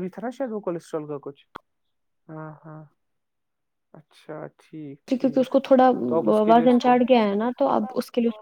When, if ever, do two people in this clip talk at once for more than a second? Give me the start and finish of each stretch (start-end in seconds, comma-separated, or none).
none